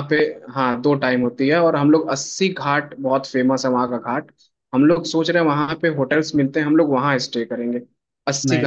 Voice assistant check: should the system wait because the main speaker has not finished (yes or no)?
yes